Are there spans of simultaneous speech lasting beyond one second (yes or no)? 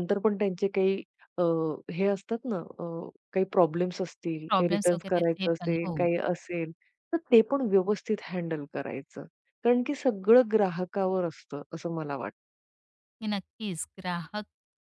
yes